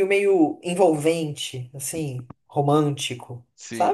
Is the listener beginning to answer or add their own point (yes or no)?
yes